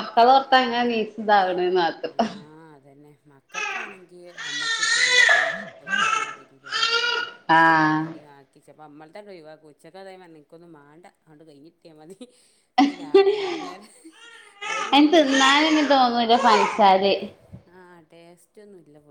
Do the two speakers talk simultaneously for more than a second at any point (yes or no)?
no